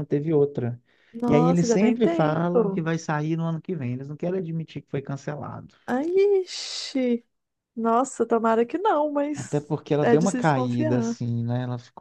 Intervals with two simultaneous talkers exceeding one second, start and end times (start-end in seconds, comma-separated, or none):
1.3-2.8, 9.3-11.2